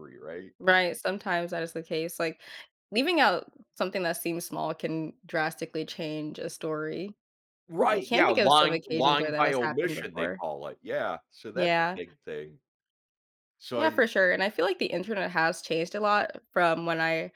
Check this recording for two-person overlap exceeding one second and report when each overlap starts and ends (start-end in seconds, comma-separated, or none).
7.9-10.4